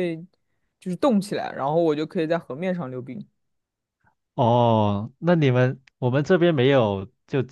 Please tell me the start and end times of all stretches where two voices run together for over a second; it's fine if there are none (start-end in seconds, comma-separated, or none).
none